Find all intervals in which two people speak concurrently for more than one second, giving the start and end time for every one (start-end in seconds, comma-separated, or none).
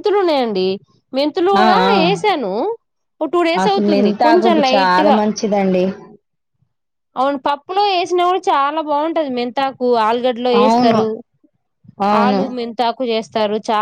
3.6-5.2